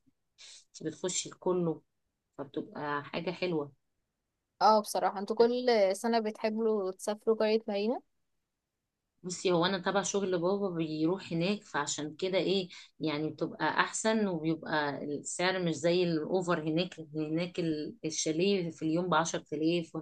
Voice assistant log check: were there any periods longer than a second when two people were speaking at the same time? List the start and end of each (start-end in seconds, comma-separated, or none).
none